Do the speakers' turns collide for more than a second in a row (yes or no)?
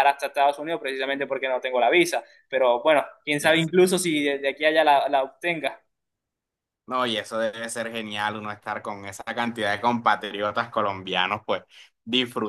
no